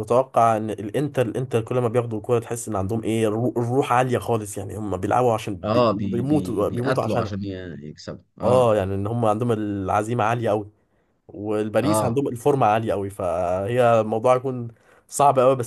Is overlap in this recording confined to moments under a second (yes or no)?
no